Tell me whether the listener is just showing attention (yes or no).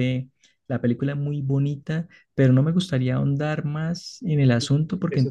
no